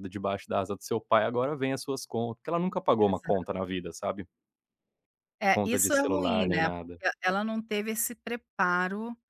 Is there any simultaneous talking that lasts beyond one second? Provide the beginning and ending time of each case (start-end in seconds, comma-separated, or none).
5.5-7.0